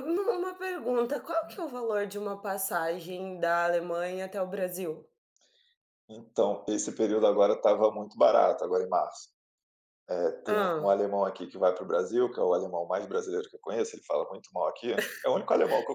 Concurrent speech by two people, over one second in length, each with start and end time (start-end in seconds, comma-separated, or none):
none